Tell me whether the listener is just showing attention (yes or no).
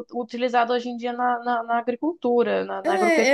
no